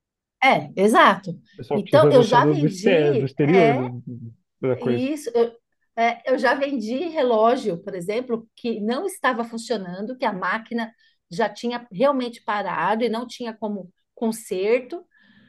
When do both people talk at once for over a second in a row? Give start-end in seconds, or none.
1.7-3.9